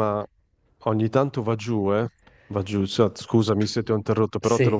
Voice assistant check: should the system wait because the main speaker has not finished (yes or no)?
yes